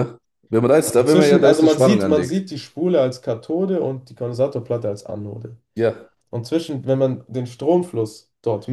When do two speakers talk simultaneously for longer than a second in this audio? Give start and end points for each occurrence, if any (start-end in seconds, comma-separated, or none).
0.8-2.4